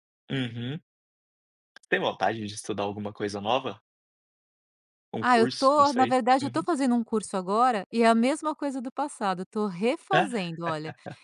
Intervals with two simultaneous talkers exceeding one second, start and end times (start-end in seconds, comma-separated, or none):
5.2-6.7